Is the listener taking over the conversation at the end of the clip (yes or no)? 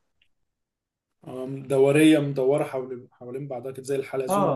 yes